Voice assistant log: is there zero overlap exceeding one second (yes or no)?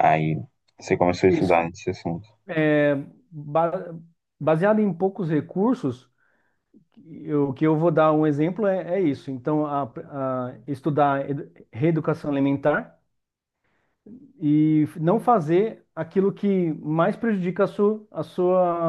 yes